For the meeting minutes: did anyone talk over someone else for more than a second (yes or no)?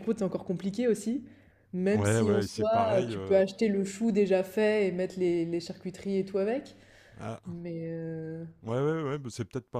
yes